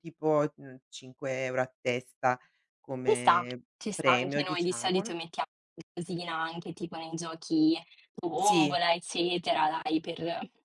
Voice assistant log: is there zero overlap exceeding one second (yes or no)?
no